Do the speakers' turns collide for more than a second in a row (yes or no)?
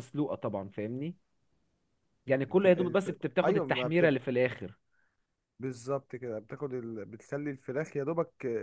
yes